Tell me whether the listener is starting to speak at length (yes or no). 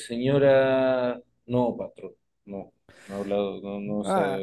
yes